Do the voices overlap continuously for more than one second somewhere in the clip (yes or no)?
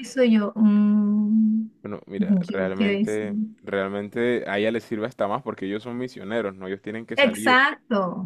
yes